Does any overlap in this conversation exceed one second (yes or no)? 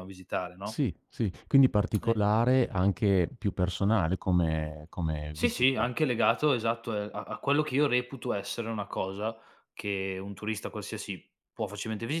no